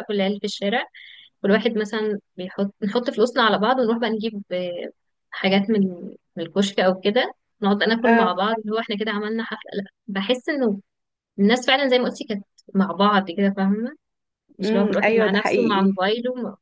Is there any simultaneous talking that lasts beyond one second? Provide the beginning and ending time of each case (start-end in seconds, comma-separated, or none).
14.6-15.9